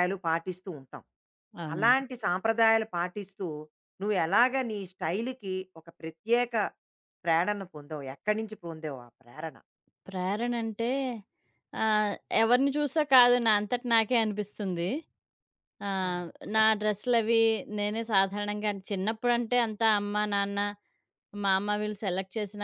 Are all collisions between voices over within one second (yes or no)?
yes